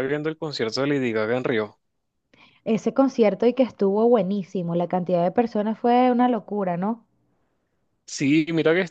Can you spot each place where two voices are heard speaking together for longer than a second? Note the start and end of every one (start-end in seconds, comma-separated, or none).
none